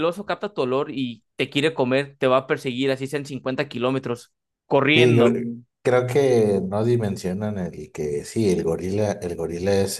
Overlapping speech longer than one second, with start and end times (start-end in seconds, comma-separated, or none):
none